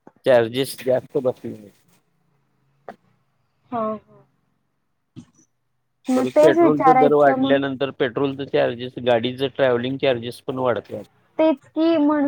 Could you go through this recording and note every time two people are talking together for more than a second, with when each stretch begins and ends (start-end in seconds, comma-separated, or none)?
6.2-7.6